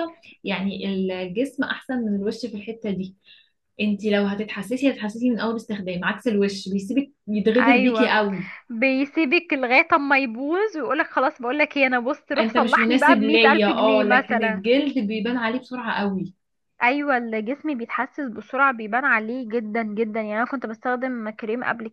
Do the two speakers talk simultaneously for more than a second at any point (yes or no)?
yes